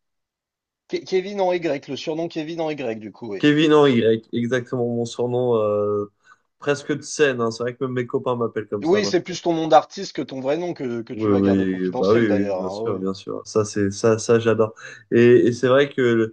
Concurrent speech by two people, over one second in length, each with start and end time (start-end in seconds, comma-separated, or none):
11.1-13.1